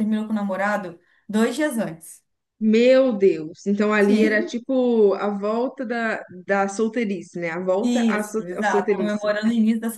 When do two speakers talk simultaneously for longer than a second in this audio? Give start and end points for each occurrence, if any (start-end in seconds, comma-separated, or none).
7.8-9.3